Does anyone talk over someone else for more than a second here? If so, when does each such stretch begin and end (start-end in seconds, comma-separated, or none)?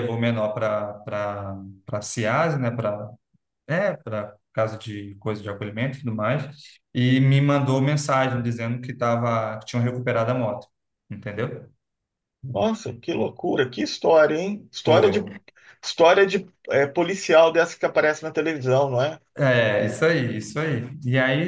none